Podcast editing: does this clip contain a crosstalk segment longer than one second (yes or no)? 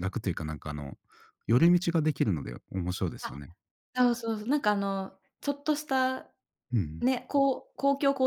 no